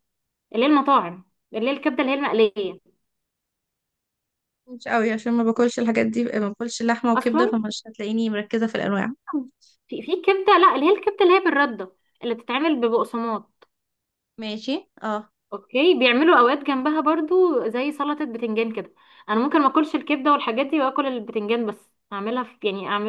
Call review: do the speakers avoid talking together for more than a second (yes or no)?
yes